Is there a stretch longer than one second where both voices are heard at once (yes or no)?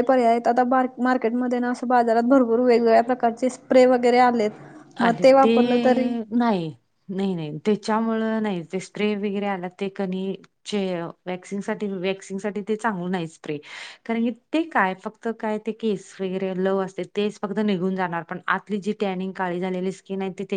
no